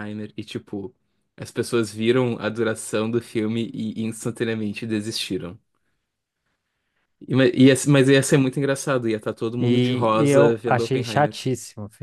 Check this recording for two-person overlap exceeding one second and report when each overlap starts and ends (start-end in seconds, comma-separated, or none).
9.6-11.4